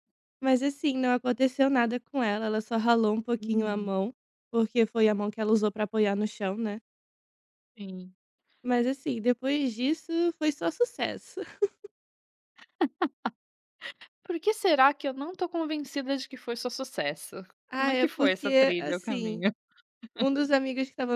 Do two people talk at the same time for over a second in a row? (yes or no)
yes